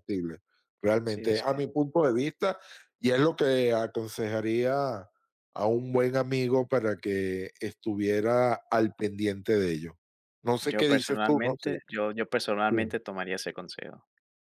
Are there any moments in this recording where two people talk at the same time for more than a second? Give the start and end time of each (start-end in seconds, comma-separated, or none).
10.6-11.8